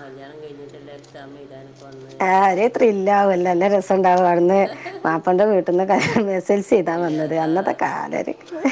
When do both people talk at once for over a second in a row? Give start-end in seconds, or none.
none